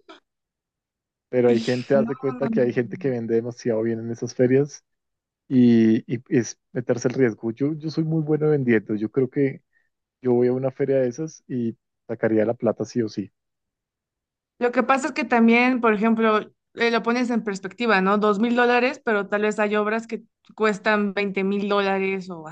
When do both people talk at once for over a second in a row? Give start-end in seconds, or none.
1.5-3.1